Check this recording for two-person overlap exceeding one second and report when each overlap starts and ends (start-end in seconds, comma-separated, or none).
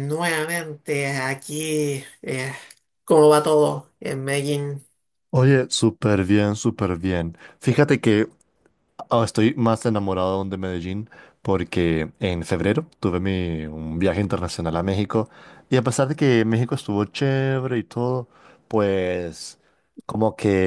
none